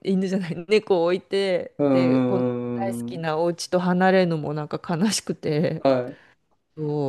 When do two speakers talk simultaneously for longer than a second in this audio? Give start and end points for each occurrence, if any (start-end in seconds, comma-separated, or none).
1.8-3.3